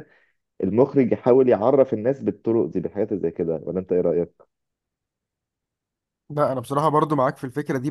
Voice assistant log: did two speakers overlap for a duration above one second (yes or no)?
no